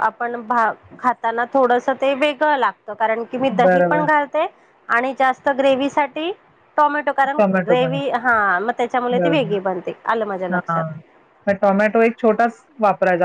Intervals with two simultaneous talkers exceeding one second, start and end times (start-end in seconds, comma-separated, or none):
none